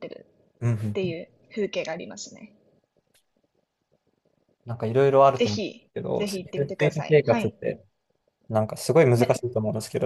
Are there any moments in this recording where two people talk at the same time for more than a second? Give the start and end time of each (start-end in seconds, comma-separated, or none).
5.3-7.5